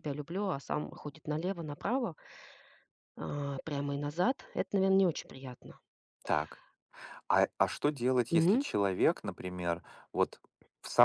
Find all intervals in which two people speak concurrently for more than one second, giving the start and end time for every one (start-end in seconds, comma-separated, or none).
none